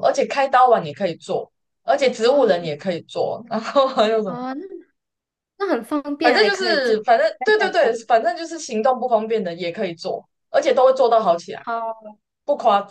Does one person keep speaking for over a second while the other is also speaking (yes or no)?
yes